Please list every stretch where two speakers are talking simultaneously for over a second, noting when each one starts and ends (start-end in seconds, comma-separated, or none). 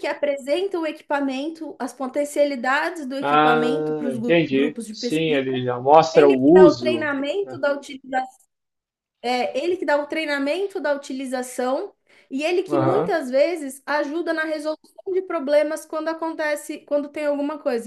3.2-5.4, 6.1-7.6